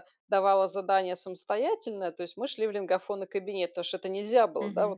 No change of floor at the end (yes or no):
yes